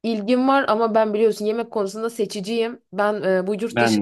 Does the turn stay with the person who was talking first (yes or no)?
yes